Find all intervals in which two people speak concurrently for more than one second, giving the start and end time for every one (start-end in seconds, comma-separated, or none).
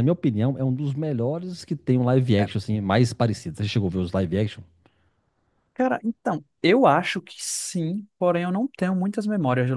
none